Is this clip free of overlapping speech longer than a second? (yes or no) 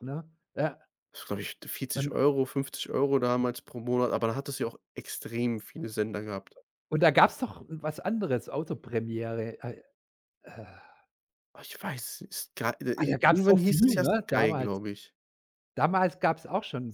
no